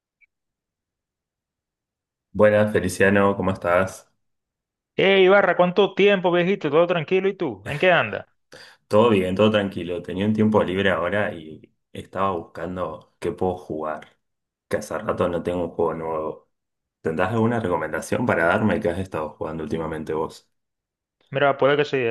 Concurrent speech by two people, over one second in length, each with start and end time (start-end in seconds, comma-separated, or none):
none